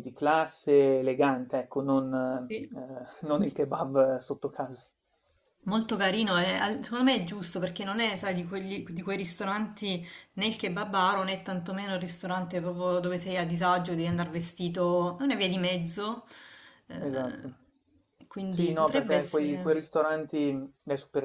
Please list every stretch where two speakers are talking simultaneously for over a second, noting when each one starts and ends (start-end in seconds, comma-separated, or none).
18.5-19.8